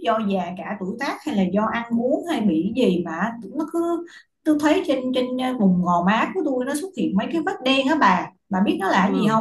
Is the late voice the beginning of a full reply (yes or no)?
yes